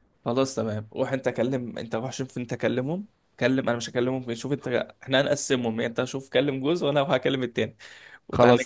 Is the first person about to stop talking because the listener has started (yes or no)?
no